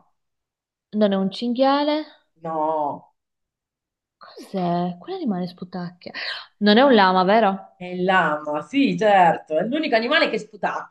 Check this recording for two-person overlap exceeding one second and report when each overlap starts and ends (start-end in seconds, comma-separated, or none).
none